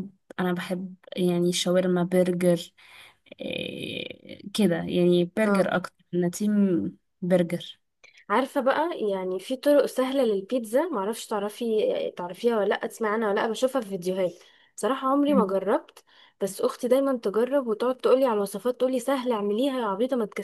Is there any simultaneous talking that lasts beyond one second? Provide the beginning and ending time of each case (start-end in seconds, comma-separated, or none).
none